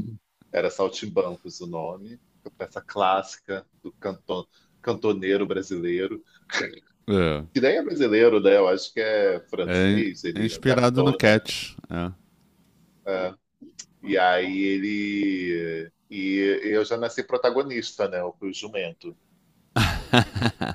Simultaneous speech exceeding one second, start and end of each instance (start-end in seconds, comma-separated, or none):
9.7-11.5